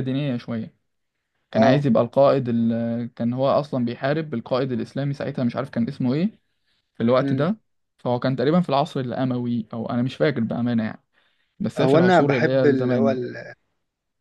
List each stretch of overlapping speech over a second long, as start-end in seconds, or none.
11.8-13.1